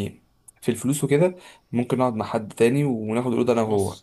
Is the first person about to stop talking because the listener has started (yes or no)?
no